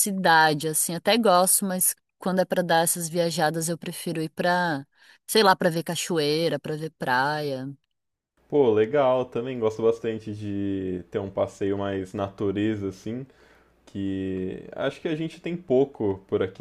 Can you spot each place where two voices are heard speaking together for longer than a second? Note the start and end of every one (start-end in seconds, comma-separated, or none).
none